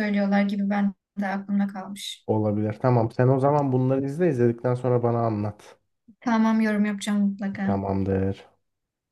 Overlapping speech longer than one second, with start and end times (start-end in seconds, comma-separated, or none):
none